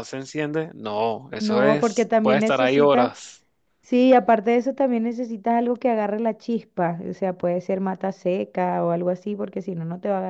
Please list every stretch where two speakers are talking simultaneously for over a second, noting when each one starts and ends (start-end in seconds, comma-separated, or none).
1.3-3.1